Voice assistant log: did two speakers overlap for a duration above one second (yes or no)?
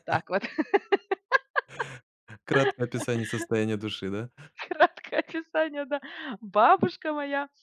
no